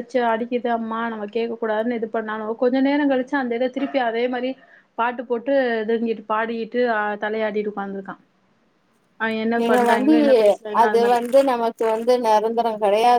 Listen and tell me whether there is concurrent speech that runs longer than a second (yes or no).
no